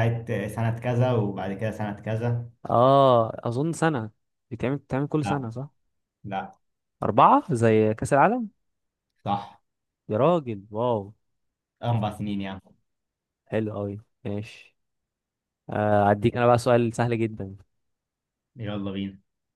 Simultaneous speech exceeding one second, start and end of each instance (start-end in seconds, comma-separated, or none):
none